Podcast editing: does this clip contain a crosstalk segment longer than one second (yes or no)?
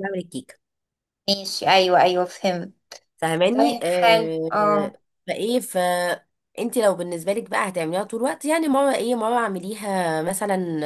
yes